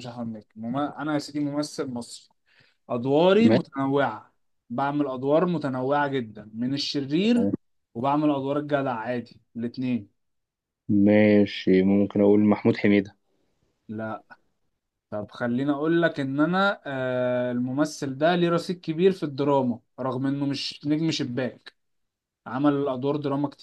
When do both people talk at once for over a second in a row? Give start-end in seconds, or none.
none